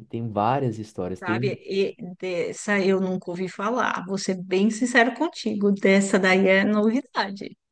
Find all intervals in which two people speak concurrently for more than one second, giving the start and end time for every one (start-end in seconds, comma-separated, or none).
none